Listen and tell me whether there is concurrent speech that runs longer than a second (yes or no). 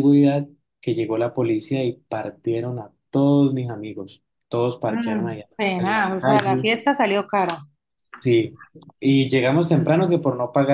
yes